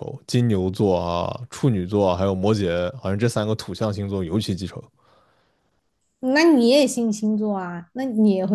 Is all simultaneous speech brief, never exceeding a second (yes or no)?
yes